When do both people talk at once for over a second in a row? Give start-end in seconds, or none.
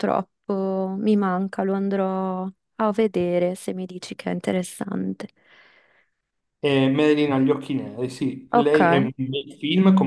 none